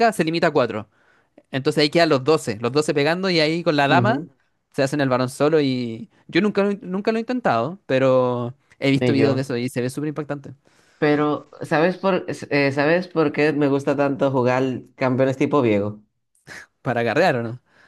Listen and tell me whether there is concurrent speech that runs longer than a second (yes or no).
no